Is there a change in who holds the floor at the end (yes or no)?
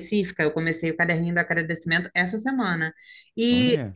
no